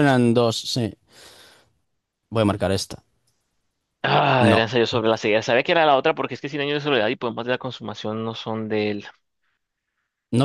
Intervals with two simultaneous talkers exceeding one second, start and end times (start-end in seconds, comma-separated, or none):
none